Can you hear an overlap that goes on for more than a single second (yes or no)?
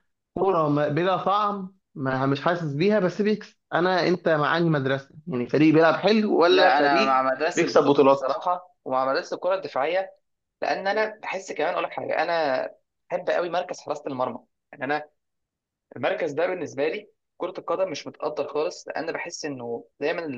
yes